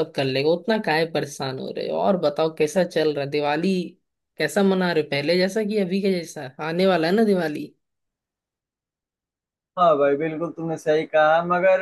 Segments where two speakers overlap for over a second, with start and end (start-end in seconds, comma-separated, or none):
none